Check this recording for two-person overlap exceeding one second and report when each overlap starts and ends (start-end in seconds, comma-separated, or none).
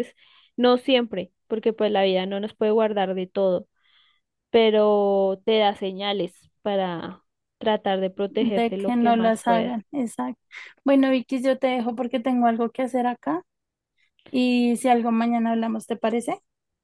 8.3-9.8